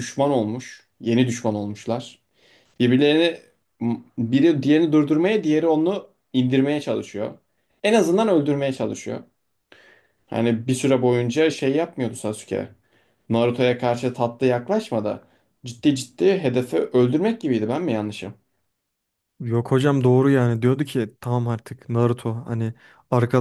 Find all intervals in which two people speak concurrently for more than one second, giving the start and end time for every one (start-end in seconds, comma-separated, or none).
none